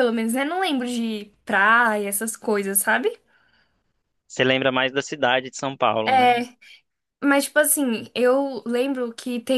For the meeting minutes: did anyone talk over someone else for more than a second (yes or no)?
no